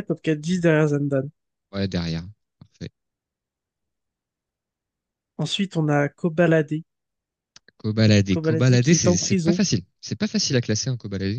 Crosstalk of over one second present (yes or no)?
yes